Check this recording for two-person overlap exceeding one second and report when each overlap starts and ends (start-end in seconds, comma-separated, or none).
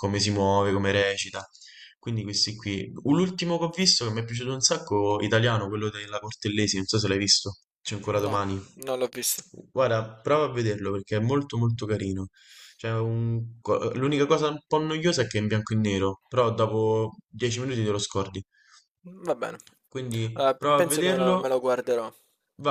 20.3-21.5